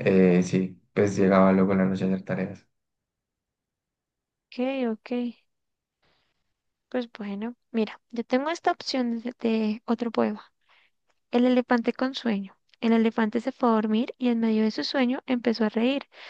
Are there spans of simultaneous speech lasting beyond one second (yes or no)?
no